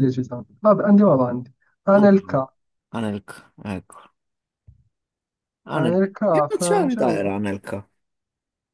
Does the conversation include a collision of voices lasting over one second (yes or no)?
yes